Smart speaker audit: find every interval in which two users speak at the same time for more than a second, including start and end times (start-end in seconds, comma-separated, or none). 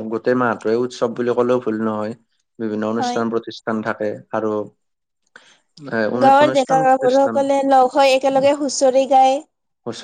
6.2-7.6